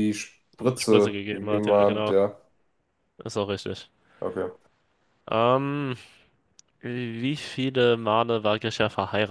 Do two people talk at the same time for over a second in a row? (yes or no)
yes